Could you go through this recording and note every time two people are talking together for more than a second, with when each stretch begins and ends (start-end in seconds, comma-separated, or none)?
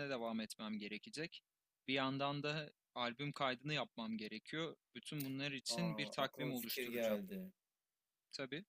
5.7-7.2